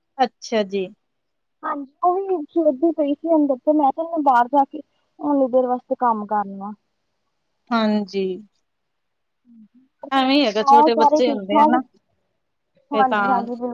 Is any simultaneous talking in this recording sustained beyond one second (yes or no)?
yes